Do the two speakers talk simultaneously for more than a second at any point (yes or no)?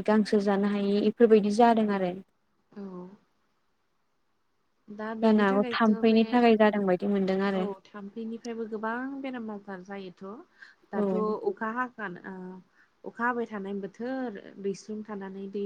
yes